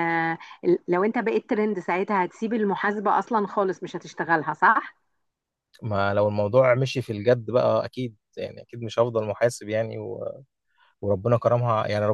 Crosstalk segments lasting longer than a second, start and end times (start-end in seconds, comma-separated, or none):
none